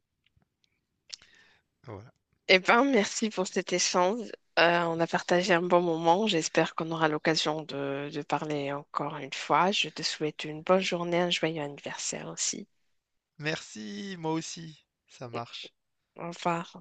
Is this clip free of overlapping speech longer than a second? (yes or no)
yes